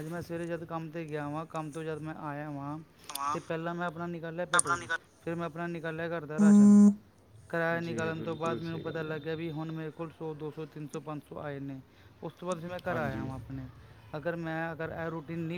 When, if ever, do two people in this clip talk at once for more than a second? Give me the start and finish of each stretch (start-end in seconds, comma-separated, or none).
7.8-9.2